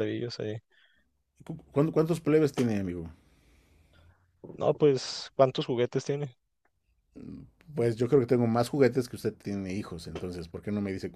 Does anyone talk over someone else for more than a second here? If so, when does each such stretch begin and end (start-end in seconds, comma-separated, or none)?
none